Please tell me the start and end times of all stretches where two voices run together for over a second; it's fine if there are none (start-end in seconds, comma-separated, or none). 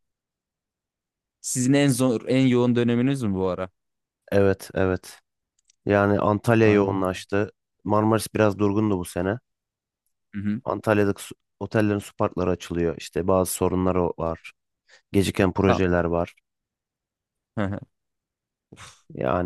none